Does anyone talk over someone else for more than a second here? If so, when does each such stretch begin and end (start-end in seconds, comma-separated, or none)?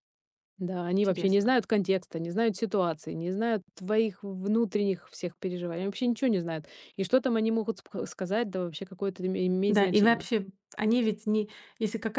none